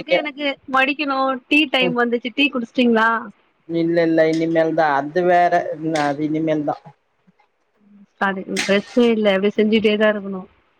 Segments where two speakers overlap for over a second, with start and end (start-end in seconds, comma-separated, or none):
none